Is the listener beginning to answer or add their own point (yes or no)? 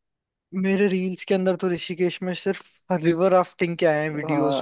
yes